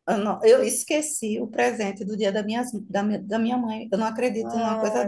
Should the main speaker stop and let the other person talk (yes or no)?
yes